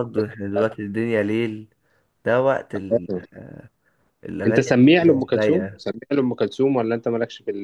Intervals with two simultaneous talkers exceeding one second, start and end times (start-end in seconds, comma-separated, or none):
4.5-5.8